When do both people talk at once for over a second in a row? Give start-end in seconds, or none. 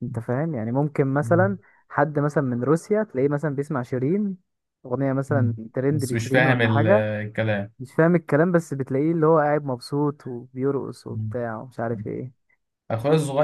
5.3-7.2